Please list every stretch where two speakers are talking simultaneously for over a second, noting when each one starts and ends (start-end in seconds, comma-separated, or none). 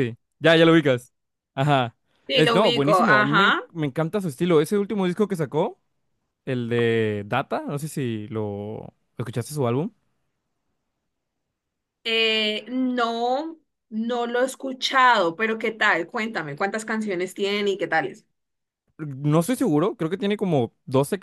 2.3-3.6